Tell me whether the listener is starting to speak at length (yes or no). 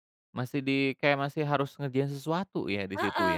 yes